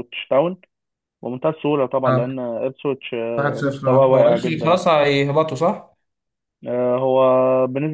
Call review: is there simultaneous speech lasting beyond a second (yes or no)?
yes